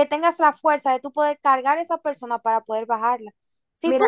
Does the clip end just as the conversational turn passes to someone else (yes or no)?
no